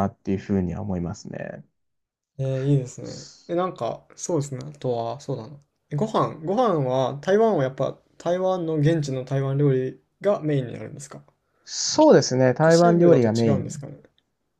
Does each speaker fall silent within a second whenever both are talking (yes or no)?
no